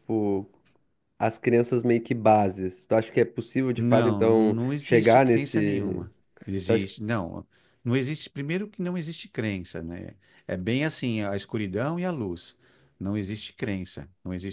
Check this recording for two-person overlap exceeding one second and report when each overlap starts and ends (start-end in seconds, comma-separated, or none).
3.8-6.0